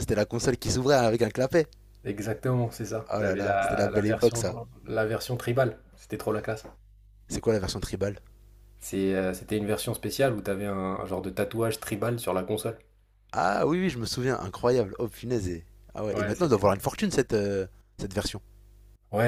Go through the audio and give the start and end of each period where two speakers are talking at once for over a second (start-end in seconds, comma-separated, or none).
3.1-4.4